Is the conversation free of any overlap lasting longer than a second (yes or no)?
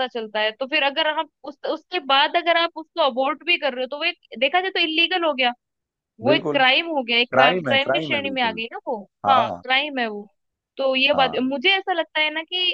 no